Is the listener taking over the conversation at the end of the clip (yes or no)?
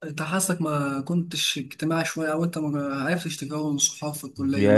yes